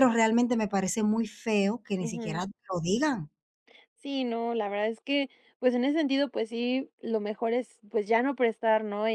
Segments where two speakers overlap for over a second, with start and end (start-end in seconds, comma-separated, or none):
none